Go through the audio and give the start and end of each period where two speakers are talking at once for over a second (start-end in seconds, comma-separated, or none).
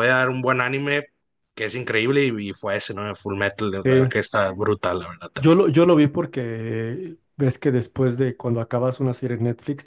none